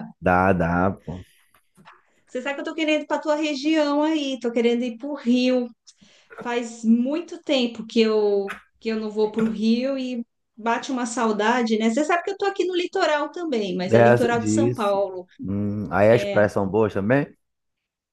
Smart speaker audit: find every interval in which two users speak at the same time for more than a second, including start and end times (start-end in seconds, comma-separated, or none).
13.8-15.0